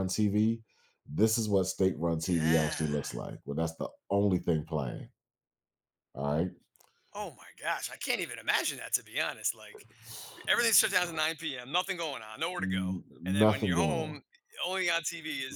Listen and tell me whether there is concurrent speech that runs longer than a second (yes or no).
yes